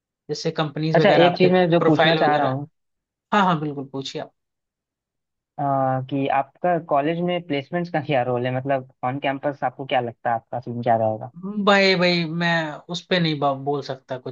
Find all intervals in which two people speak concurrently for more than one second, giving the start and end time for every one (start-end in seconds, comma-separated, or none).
0.9-2.5